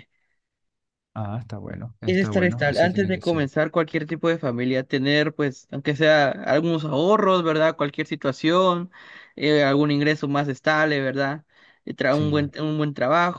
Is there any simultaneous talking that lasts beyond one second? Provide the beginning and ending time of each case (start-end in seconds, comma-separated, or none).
2.1-3.5